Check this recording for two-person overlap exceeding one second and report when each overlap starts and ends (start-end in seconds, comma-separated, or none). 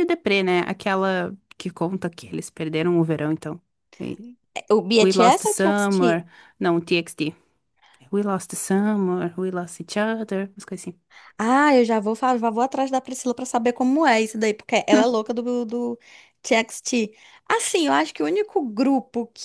5.0-6.2